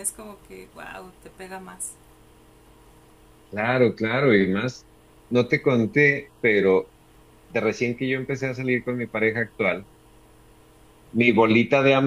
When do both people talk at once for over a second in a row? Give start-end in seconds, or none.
none